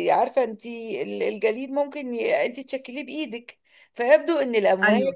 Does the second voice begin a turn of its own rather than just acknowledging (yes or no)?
no